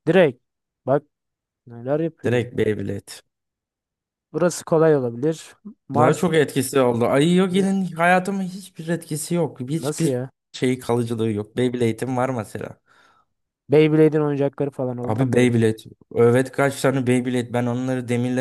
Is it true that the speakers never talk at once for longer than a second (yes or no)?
yes